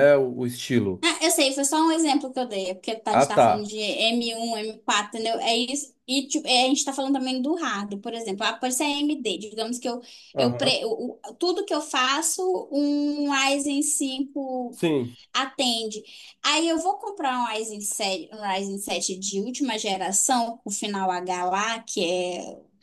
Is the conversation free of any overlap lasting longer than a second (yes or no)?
yes